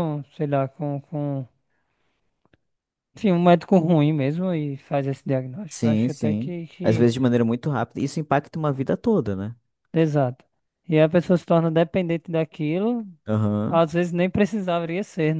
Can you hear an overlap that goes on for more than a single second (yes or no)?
yes